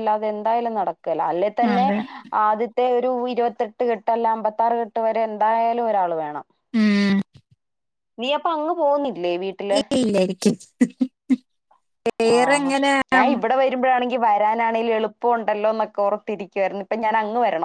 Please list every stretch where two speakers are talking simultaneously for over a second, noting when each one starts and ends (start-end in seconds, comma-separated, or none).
none